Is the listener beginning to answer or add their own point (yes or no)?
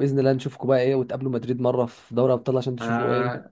yes